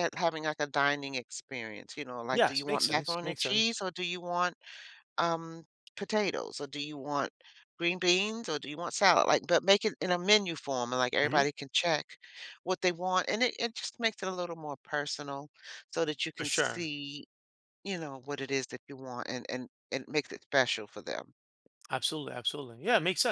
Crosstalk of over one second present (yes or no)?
yes